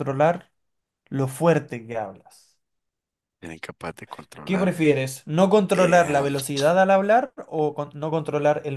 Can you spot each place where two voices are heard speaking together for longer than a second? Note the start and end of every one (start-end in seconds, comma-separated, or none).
none